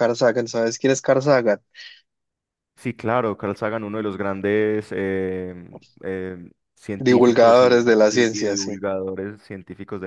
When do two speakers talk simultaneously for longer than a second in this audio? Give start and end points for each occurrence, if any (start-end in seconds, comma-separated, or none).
7.0-8.8